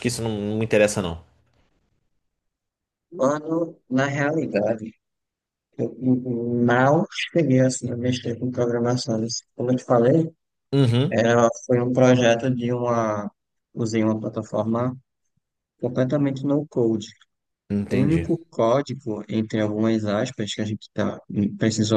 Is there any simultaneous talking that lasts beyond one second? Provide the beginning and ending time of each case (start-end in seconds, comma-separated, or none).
none